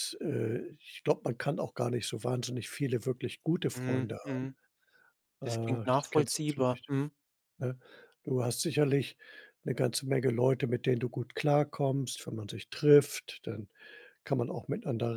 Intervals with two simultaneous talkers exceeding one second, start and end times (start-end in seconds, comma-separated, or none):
5.4-6.9